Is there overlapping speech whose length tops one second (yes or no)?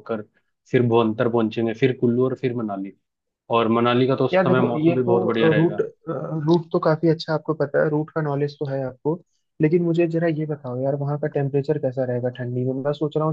yes